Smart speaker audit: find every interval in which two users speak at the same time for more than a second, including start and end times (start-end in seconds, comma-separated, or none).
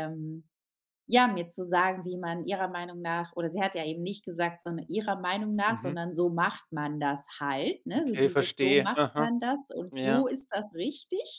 7.9-9.3